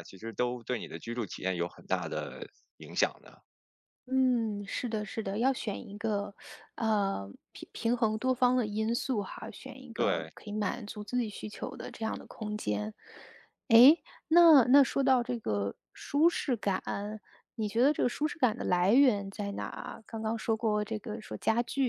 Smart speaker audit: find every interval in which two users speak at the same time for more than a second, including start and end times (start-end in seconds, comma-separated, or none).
none